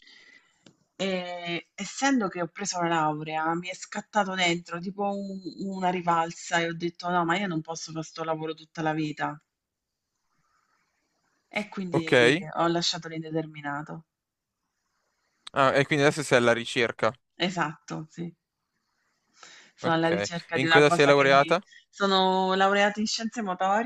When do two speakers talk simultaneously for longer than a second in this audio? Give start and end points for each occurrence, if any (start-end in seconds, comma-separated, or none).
19.8-21.6